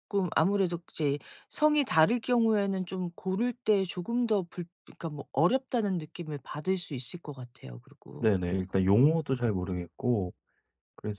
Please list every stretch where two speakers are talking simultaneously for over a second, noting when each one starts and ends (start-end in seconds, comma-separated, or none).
none